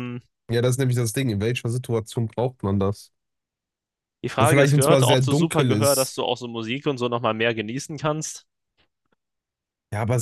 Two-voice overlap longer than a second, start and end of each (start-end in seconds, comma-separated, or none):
4.4-6.2